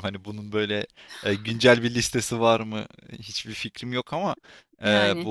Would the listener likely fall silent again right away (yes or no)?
yes